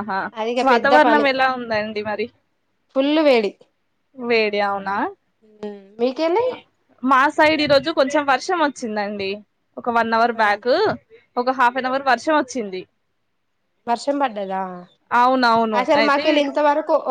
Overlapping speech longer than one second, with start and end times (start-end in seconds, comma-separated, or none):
none